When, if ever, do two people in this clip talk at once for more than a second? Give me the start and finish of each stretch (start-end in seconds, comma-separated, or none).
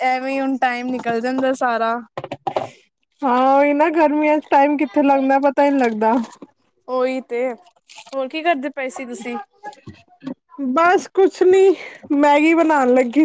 none